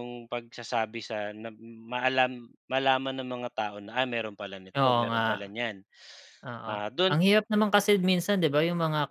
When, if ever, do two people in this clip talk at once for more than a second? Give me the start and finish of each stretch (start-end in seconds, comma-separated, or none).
none